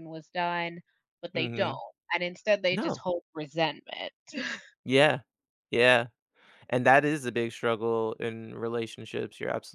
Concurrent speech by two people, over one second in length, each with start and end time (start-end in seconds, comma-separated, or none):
none